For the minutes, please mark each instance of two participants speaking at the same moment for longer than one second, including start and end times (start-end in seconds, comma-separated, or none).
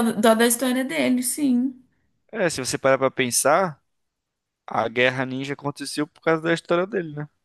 none